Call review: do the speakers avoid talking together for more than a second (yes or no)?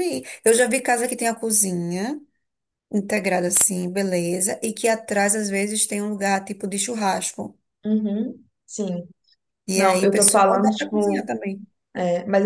no